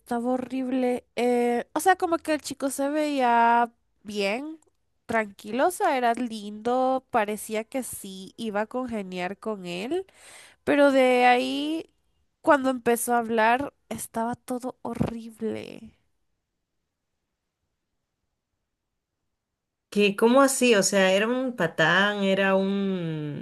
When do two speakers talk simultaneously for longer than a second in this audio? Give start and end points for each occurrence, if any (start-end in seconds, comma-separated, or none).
none